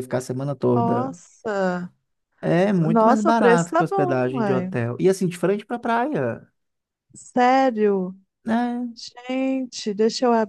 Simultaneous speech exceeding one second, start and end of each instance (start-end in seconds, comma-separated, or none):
2.9-4.7